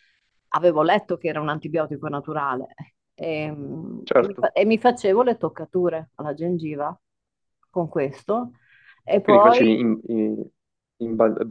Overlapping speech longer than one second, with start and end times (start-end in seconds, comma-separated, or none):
none